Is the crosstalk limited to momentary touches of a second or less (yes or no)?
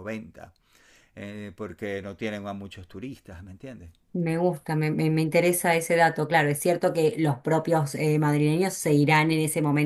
yes